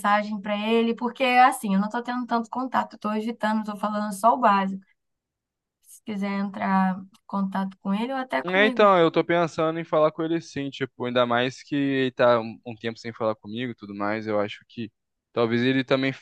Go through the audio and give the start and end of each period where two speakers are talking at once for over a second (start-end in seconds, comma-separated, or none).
none